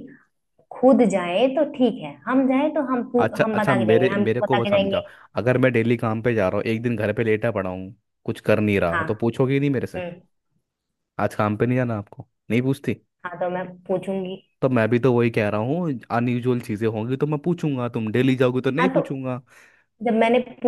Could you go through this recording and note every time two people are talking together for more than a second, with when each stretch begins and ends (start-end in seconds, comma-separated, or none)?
3.2-5.0